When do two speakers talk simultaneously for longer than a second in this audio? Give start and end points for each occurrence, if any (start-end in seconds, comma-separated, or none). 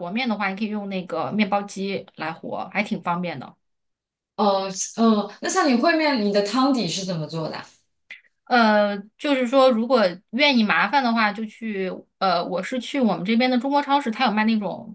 none